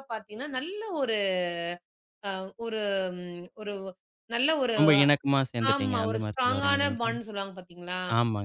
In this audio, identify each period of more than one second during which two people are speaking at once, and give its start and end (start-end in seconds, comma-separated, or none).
5.7-7.1